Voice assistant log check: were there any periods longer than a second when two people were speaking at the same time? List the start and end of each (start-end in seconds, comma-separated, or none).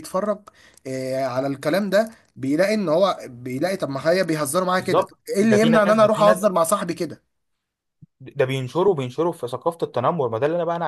4.8-6.5